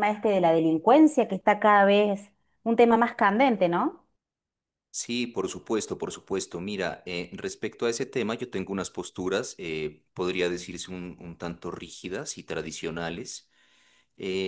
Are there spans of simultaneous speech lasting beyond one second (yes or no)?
no